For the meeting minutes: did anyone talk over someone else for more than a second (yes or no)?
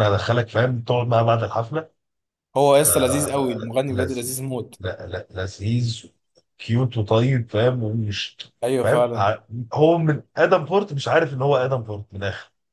yes